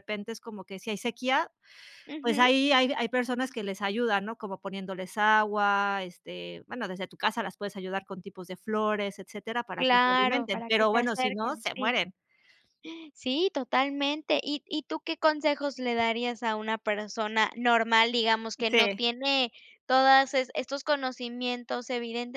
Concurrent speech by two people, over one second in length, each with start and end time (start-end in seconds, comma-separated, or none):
9.8-12.0